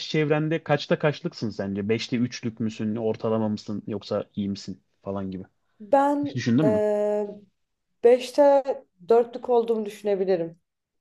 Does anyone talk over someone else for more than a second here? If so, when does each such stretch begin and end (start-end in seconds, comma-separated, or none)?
none